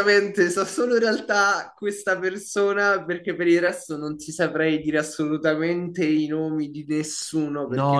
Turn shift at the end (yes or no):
yes